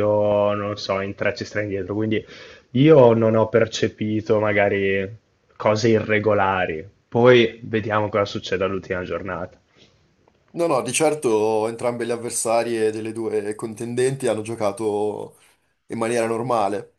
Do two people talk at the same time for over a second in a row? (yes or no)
no